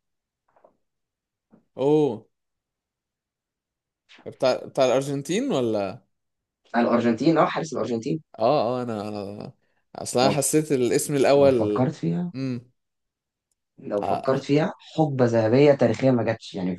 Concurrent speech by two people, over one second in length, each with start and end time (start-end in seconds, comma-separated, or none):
none